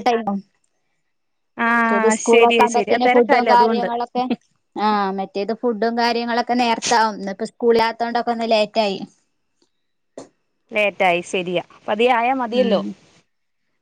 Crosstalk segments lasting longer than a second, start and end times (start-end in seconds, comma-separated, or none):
1.8-3.9